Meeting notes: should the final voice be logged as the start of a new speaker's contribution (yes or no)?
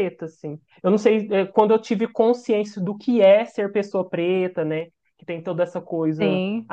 no